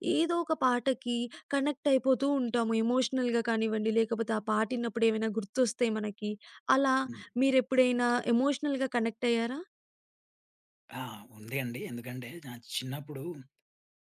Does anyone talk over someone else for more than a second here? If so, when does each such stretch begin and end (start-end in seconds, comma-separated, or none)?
none